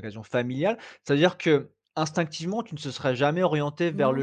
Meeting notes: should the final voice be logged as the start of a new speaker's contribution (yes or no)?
no